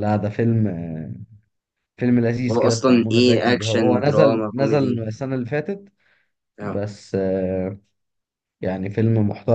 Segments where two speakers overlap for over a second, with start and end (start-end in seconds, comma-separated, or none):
2.5-5.0